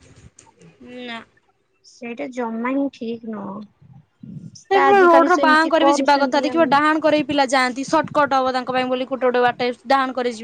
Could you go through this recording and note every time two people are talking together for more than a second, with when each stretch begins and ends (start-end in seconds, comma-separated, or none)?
4.7-6.7